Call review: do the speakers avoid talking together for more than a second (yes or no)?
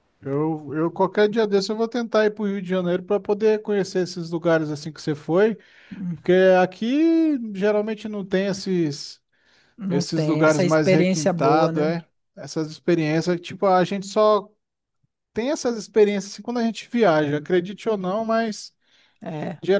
no